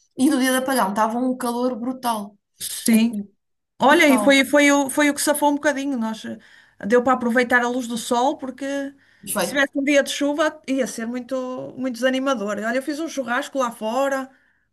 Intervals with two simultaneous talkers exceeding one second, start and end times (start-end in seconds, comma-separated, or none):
none